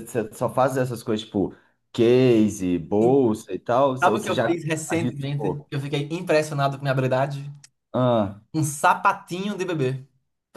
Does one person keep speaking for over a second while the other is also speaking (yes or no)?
yes